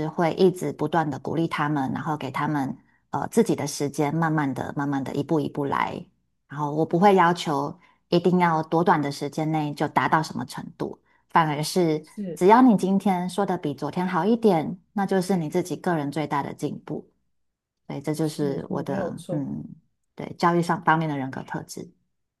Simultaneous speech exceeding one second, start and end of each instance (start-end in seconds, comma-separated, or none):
18.2-19.5